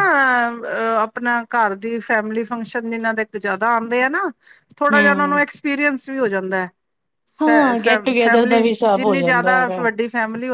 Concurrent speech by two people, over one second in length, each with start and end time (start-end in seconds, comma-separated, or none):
8.2-9.9